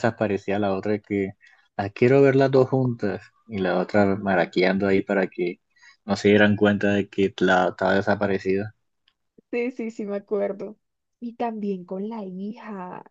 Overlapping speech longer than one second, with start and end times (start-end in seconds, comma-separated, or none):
none